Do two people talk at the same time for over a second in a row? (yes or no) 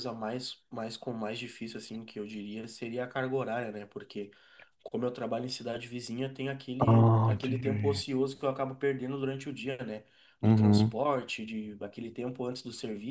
yes